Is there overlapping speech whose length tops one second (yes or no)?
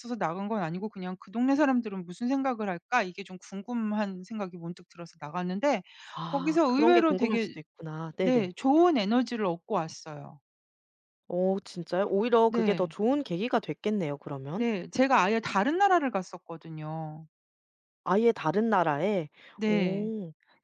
yes